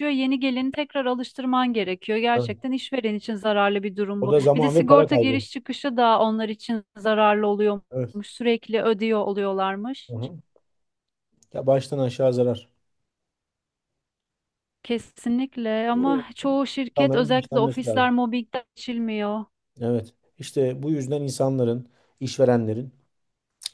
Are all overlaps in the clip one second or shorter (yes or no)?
no